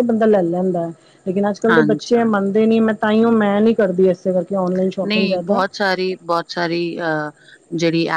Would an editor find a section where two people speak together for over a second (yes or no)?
no